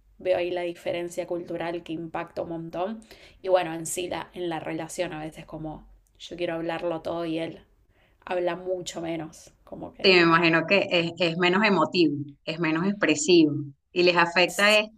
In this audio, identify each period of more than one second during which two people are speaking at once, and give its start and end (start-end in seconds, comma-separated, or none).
none